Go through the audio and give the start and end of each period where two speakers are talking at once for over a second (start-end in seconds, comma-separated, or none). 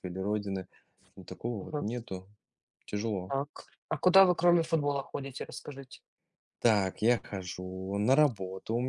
none